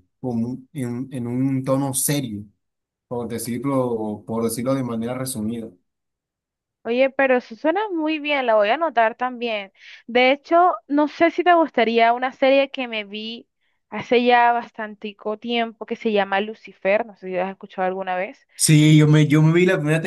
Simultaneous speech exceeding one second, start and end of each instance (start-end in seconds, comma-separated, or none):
none